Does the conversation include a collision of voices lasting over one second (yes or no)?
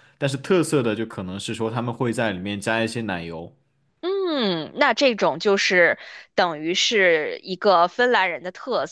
no